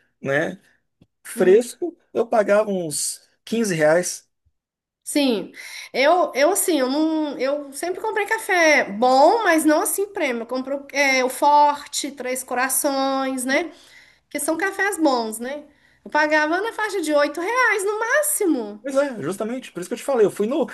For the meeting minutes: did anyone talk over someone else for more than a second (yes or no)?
no